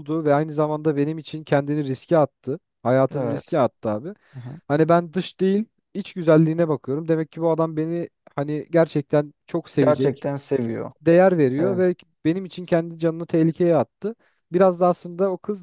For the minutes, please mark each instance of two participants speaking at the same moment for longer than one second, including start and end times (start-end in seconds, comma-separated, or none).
none